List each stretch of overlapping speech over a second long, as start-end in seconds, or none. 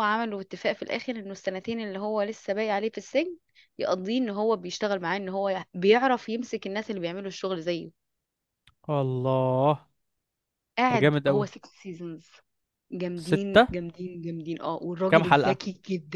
none